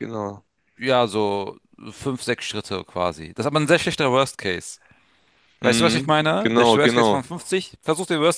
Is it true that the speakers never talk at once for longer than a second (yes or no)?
no